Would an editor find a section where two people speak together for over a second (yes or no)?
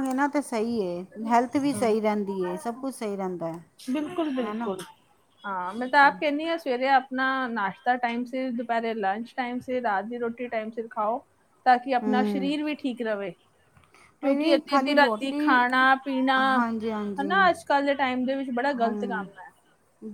yes